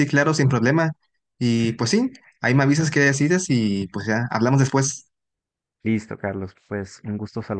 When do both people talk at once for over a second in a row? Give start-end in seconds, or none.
none